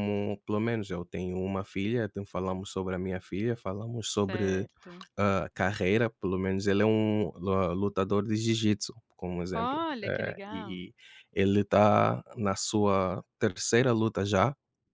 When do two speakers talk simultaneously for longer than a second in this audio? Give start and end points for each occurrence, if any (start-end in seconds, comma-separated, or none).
9.5-10.8